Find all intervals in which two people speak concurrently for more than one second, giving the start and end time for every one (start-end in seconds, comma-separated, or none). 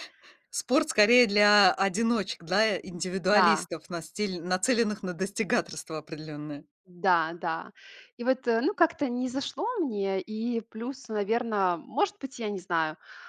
none